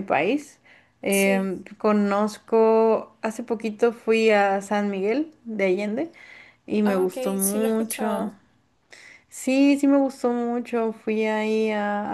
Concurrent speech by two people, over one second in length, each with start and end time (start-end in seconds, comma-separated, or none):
6.8-8.3